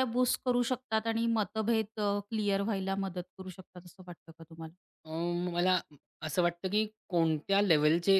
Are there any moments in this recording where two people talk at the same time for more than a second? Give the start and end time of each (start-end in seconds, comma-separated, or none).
none